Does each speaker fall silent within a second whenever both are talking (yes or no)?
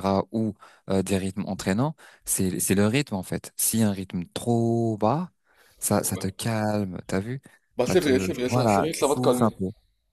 no